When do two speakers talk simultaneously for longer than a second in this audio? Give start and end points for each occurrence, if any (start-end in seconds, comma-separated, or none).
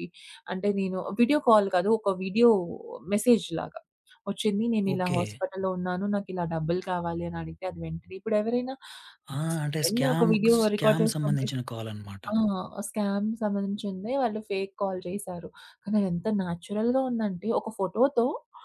9.8-11.5